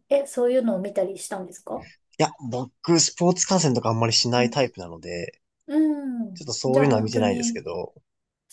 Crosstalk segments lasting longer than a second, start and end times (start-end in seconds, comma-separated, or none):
6.3-7.6